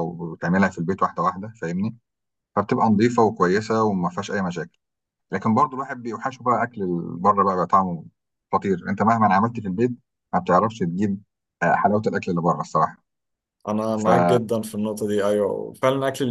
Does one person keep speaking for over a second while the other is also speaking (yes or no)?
no